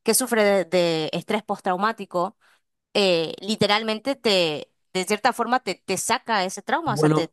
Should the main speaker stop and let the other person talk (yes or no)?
yes